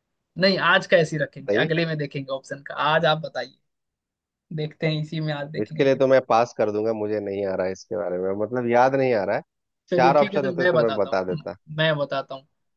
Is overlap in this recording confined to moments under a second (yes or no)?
no